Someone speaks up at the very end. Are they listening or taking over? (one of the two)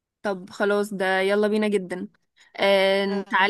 listening